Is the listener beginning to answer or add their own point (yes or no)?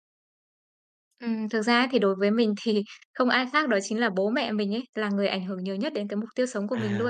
yes